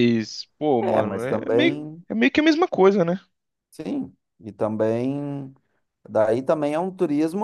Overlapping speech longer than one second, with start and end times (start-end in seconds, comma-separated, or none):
0.8-2.0